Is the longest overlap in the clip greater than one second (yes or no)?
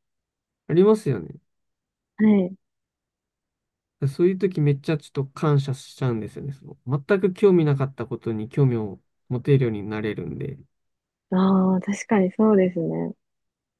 no